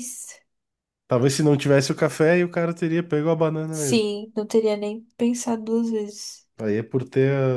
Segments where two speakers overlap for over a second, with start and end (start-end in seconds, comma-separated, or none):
none